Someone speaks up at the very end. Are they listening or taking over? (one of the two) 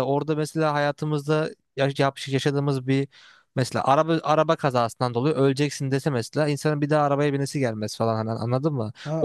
taking over